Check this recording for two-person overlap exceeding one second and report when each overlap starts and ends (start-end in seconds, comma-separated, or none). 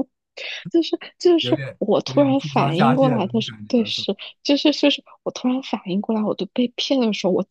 1.4-4.1